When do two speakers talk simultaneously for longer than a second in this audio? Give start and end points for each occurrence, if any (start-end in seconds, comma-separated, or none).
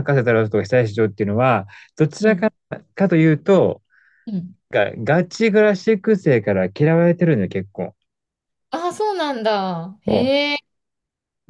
none